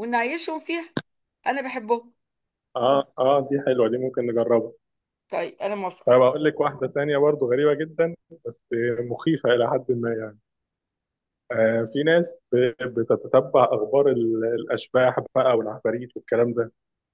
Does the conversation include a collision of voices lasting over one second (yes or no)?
no